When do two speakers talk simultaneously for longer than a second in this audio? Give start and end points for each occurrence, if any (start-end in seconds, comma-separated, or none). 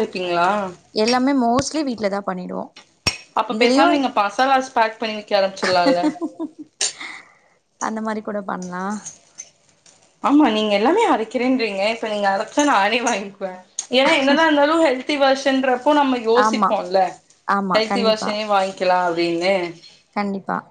none